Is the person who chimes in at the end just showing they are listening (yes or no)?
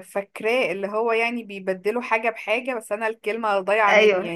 no